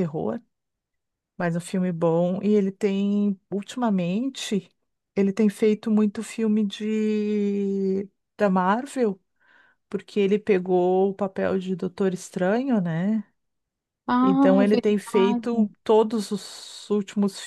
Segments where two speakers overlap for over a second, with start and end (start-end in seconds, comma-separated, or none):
14.2-15.8